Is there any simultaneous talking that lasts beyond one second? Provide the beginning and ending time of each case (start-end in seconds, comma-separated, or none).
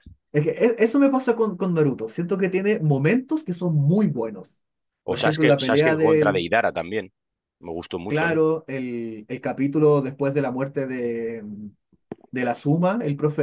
5.1-6.5